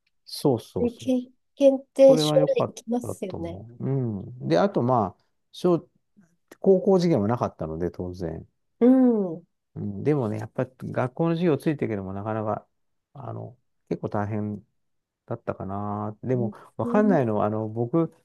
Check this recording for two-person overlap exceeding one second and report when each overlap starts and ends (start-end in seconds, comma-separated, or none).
2.1-3.6